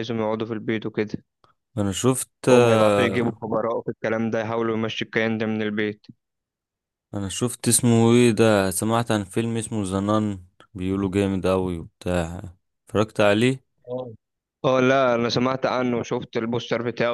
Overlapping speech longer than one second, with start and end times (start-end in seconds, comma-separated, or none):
none